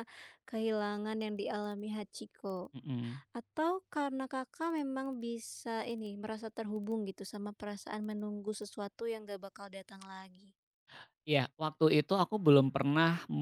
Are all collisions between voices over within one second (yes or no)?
yes